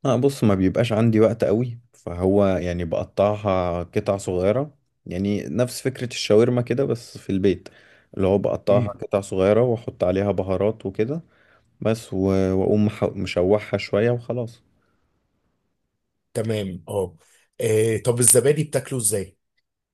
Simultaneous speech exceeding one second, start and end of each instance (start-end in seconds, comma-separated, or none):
none